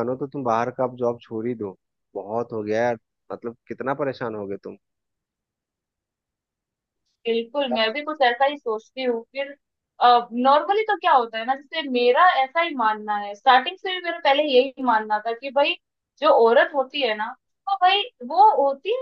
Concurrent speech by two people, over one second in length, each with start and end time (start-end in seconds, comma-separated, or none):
none